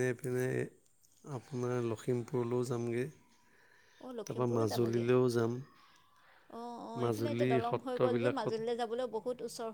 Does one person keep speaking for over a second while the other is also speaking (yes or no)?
yes